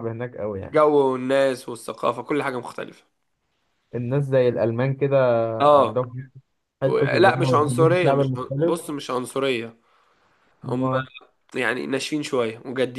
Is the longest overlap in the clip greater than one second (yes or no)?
yes